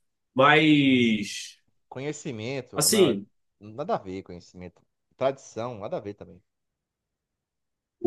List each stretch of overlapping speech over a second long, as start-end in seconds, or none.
none